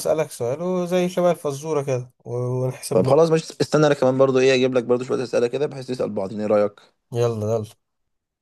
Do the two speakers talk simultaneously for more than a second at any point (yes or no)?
no